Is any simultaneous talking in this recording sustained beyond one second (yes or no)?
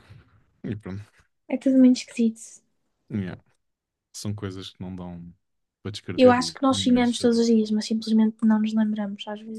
yes